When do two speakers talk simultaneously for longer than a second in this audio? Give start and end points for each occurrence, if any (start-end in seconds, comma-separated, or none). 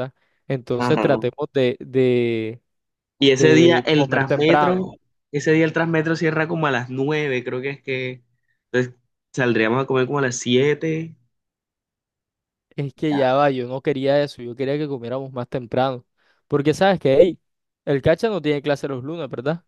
3.2-4.9